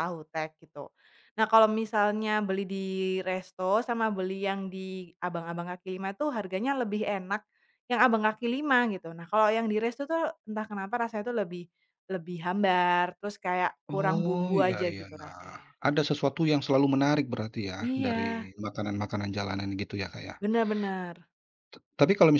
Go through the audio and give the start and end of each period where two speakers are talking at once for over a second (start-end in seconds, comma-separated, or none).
13.9-15.7